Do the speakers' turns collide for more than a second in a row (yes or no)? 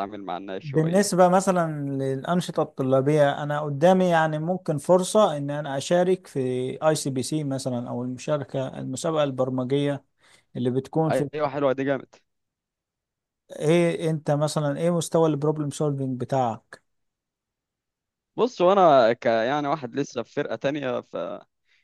no